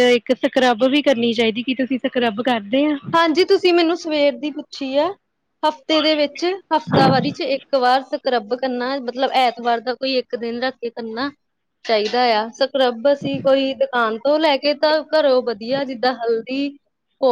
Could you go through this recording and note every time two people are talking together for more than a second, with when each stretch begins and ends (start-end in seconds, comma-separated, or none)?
none